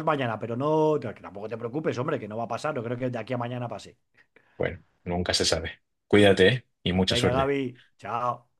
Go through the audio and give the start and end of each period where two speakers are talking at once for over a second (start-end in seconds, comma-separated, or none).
none